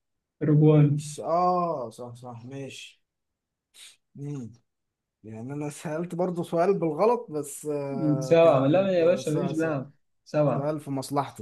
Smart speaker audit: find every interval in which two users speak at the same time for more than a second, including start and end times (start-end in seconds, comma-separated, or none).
8.2-9.7